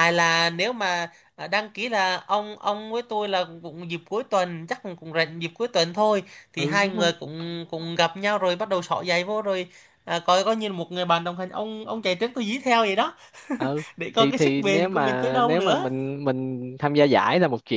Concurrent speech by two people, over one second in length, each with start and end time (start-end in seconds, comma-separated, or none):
14.0-15.9